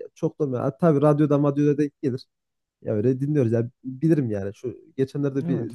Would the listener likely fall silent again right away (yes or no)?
yes